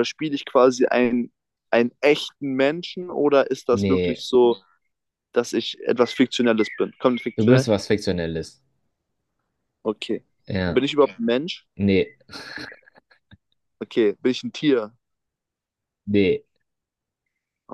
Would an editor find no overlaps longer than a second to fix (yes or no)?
yes